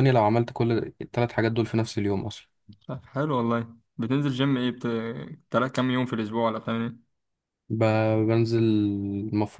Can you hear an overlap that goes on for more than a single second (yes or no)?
no